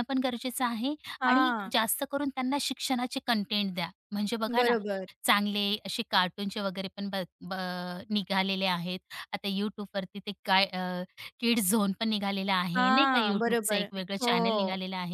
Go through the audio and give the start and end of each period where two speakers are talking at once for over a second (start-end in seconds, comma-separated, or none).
12.8-14.3